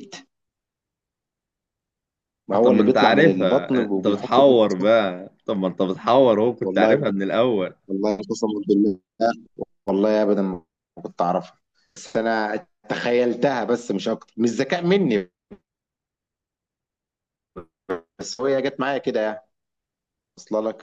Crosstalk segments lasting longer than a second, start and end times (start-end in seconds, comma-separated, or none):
2.6-4.9